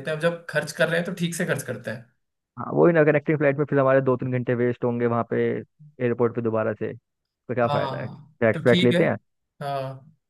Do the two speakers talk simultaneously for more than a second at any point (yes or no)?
yes